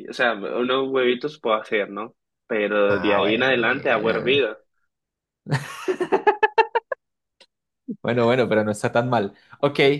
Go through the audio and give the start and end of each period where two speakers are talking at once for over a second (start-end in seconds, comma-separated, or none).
2.9-4.5